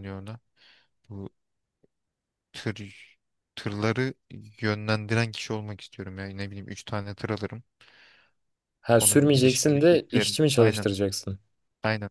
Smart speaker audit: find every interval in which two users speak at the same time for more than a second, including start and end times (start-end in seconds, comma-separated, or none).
9.0-10.9